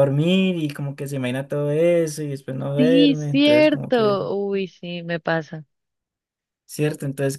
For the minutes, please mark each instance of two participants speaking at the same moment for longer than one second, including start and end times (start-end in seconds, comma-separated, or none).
2.8-4.2